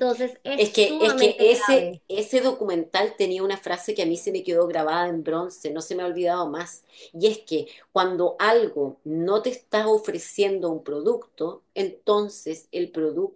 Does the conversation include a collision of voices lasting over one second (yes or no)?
yes